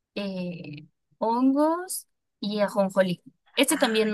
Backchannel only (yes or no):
yes